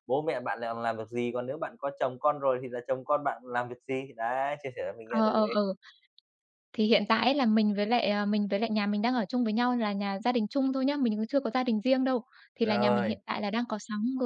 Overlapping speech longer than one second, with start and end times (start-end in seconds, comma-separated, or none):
none